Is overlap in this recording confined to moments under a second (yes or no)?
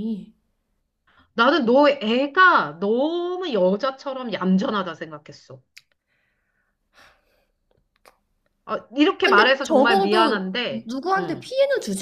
no